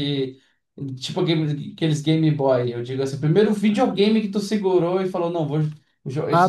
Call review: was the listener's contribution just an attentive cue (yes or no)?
no